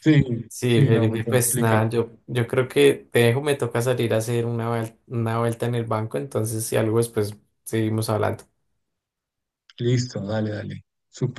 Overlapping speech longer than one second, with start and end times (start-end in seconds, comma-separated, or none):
0.7-1.9